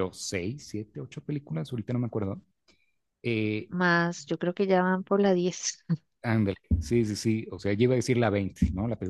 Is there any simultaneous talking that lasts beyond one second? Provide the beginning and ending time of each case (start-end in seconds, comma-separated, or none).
none